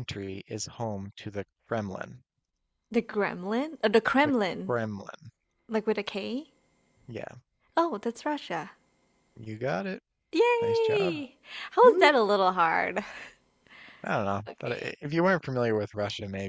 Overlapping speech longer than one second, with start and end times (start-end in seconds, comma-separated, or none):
none